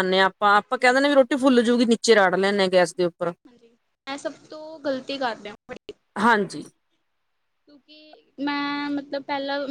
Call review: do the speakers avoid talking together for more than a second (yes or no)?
yes